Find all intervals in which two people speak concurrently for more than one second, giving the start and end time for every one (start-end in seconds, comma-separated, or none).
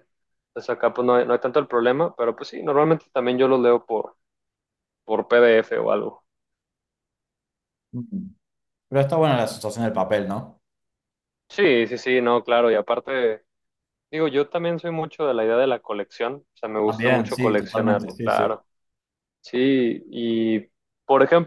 16.8-18.6